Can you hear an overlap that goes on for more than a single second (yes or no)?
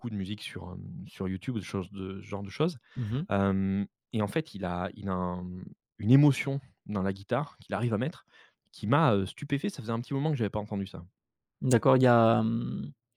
no